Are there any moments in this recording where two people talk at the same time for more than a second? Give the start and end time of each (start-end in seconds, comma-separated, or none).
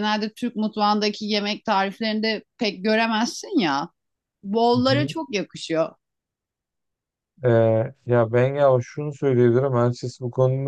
none